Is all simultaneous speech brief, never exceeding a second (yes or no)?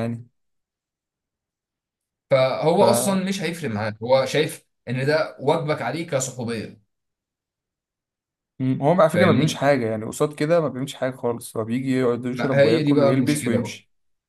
no